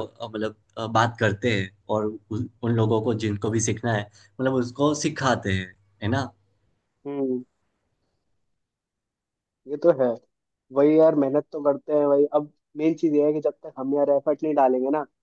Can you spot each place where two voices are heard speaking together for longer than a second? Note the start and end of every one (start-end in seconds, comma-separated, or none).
none